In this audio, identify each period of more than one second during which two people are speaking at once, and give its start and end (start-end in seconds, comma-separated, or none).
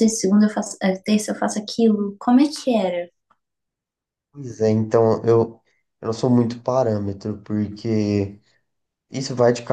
none